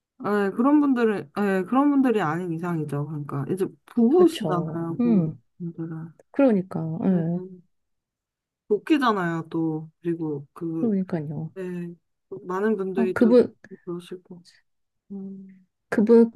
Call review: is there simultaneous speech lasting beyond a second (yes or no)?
yes